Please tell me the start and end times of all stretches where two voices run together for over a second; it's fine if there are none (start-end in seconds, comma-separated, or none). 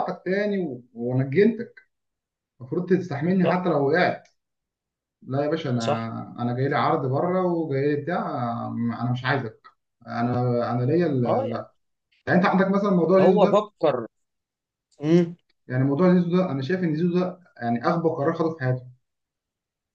none